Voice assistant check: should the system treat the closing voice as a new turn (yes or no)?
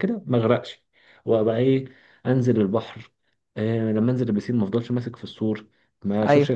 no